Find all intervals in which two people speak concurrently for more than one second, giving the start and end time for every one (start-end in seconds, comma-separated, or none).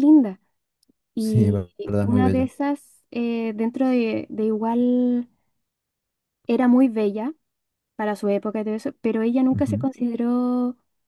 1.1-2.5